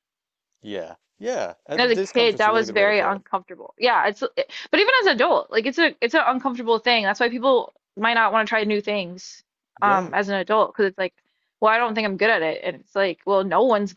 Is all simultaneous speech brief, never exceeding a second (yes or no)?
no